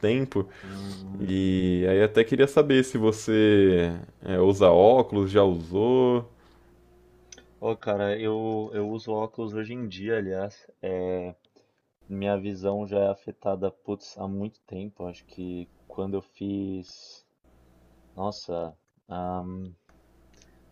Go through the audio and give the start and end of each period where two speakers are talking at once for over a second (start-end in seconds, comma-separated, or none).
none